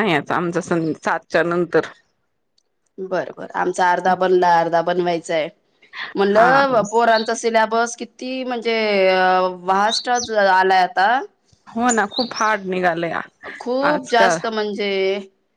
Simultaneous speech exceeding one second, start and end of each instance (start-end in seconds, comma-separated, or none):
none